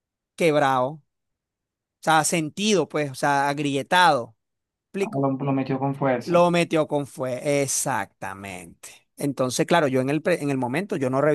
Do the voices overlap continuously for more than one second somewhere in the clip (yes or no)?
no